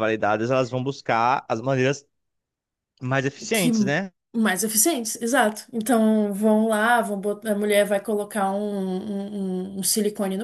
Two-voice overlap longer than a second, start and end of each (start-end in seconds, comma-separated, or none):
none